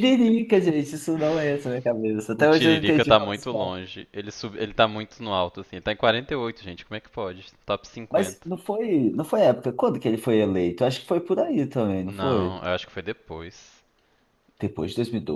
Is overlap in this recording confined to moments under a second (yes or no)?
no